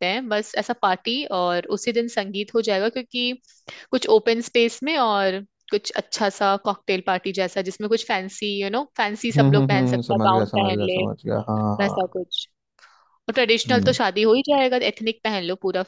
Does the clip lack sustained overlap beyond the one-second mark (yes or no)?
no